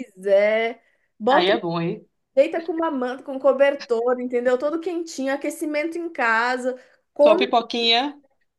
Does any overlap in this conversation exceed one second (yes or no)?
no